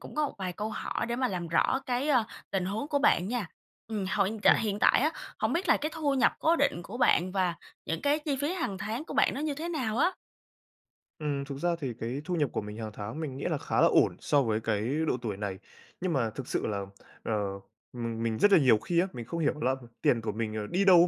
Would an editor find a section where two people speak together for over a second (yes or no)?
no